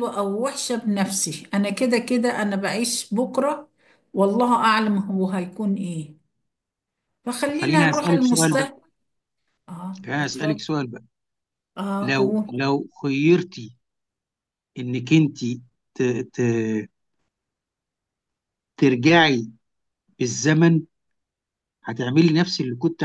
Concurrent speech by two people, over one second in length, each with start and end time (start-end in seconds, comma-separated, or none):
7.5-8.7